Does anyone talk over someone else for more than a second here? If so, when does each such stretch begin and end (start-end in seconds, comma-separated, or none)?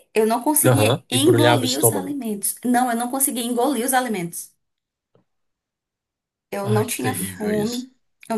0.6-2.2, 6.6-7.9